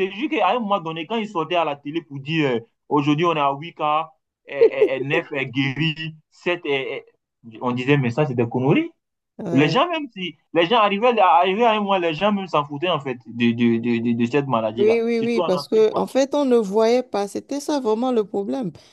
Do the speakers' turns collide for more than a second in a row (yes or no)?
yes